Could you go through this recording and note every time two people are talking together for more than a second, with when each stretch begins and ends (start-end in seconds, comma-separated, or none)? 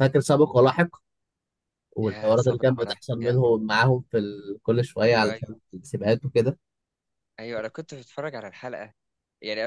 2.0-3.4